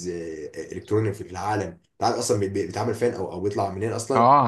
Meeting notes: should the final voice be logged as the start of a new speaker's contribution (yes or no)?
yes